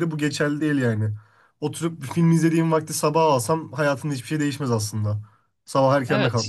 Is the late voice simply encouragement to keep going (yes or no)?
no